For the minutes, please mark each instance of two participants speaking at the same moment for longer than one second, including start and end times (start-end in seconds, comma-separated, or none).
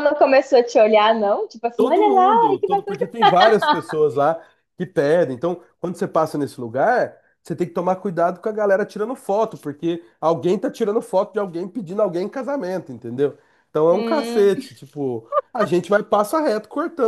1.7-3.0